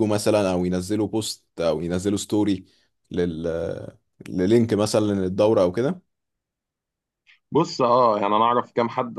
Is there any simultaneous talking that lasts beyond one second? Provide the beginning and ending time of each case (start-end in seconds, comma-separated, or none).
none